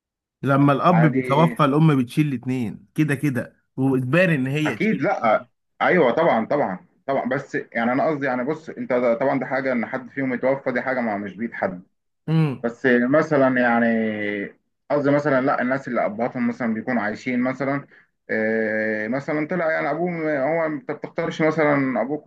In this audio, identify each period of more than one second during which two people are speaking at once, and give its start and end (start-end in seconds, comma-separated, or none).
none